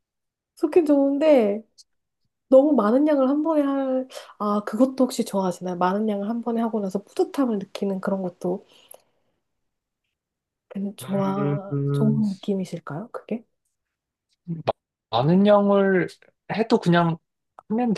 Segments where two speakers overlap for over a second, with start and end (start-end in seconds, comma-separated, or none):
11.0-12.2